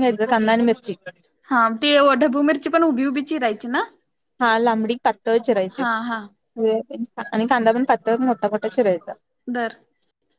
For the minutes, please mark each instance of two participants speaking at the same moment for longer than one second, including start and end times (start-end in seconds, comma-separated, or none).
none